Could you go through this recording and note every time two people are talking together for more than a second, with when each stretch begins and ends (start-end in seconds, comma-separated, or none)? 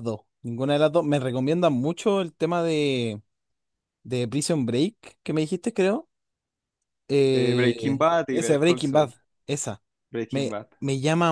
7.3-9.1